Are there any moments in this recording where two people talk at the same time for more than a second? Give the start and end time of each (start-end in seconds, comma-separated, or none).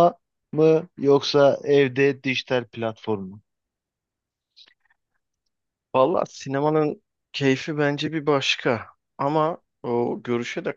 none